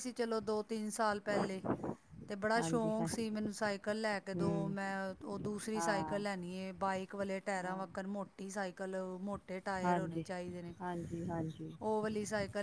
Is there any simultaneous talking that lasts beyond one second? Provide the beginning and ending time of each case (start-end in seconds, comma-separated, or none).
none